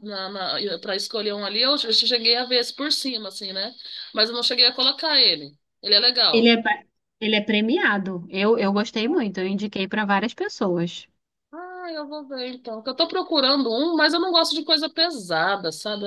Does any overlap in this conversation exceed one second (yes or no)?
no